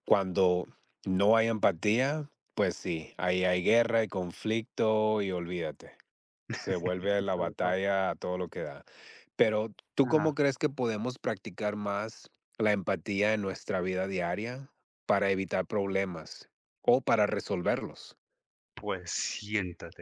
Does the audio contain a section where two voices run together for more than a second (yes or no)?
no